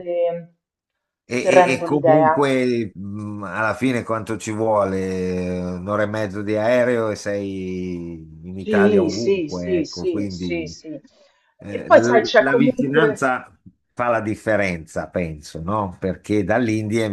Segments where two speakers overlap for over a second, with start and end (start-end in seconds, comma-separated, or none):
1.2-2.5, 8.5-10.8, 11.7-13.3